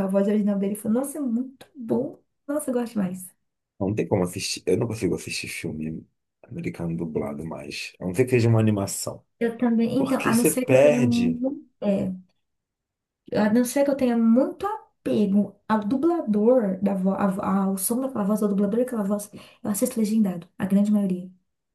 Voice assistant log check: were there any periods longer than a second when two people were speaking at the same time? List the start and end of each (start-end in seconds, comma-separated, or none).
10.0-11.4